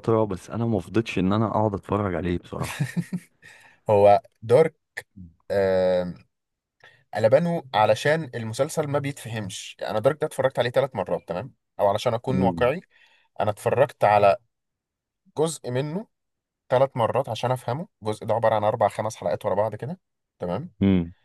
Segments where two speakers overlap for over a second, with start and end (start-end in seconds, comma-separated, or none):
none